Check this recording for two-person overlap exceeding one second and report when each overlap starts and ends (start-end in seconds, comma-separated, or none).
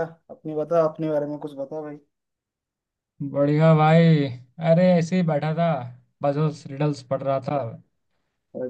none